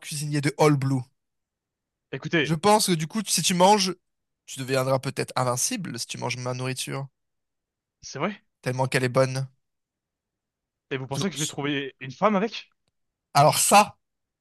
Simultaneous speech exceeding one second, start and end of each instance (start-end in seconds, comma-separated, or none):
none